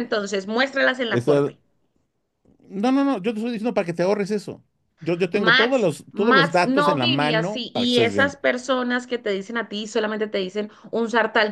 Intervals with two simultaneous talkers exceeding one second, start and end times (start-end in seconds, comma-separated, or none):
5.3-8.4